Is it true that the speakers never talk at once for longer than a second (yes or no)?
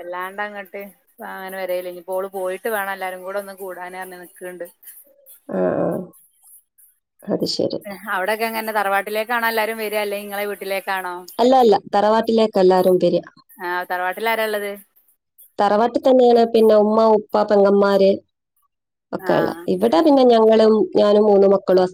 yes